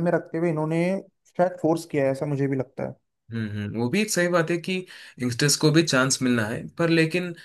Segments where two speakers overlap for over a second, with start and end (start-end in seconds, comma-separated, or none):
none